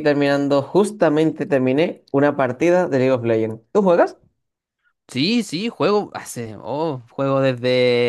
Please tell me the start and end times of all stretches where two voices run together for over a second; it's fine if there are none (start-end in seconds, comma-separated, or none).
none